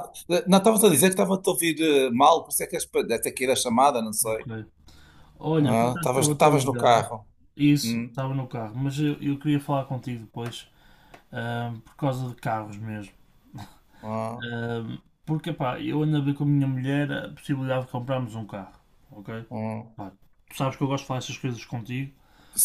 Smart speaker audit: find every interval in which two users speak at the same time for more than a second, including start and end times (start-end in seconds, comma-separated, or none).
5.6-7.0